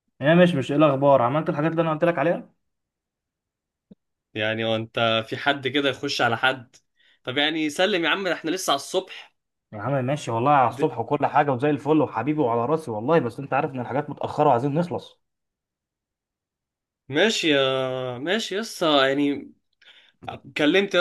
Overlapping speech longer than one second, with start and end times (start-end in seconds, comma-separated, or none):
none